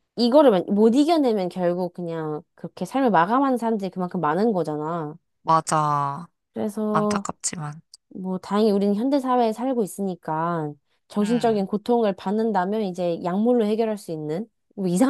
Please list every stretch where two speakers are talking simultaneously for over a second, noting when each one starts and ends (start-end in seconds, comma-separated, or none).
none